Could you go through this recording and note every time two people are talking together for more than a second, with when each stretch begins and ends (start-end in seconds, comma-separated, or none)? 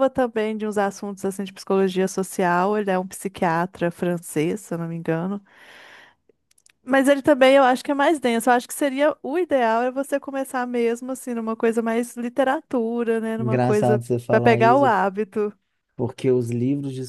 13.4-14.9